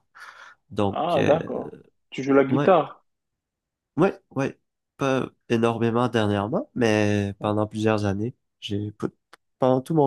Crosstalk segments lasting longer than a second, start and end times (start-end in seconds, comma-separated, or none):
none